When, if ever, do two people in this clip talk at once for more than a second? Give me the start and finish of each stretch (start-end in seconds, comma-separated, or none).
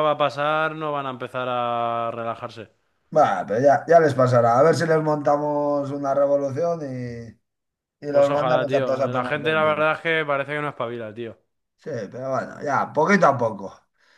8.1-9.8